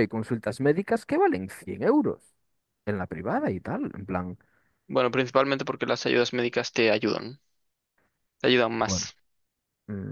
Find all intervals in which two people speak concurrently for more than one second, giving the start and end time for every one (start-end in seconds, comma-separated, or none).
none